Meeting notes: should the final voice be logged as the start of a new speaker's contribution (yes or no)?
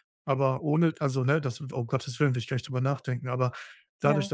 no